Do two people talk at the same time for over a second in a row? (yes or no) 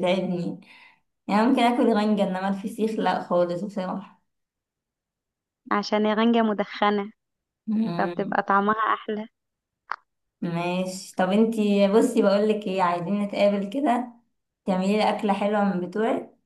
no